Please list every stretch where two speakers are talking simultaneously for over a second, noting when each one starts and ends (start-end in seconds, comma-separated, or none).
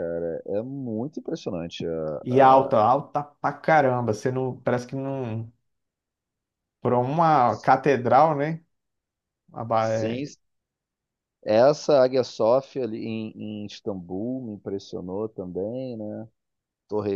none